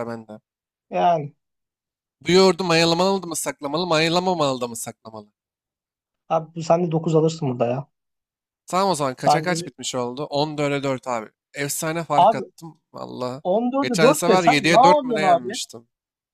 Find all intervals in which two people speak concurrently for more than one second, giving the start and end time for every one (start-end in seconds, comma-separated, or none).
13.8-15.6